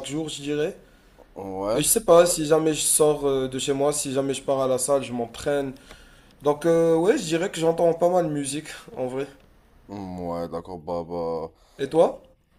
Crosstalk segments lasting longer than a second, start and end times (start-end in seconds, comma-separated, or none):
none